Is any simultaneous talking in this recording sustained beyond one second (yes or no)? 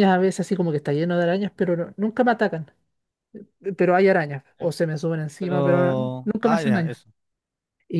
yes